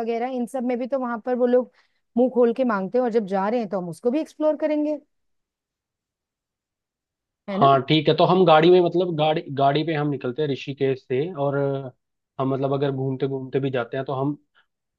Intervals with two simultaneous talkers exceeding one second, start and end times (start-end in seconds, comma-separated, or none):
none